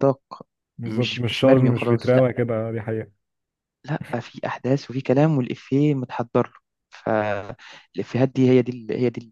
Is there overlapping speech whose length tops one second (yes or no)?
yes